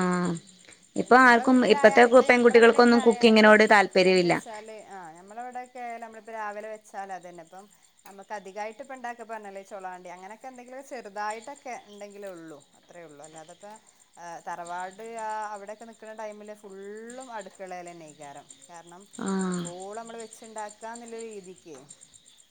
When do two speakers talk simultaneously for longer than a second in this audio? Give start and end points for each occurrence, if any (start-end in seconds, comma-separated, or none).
1.0-3.5